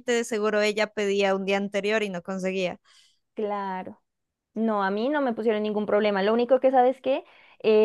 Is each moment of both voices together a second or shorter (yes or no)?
yes